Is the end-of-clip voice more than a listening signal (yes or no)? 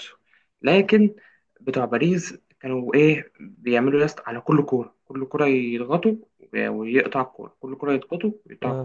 no